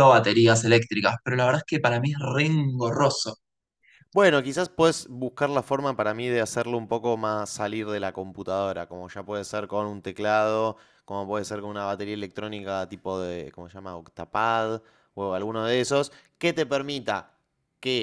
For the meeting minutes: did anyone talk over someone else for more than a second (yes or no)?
no